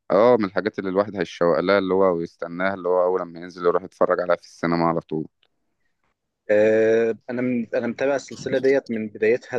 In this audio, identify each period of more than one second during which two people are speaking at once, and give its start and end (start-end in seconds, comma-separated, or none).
none